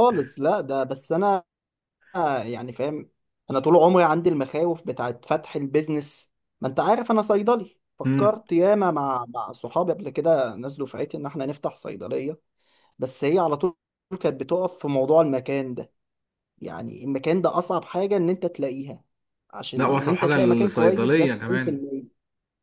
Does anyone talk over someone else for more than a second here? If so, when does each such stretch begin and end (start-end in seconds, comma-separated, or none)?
19.8-21.8